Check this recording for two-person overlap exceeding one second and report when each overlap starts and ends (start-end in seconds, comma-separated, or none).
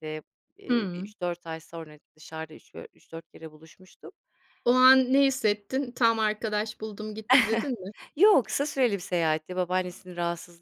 none